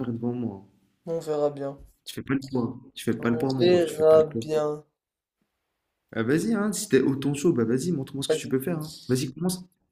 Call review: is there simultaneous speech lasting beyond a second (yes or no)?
yes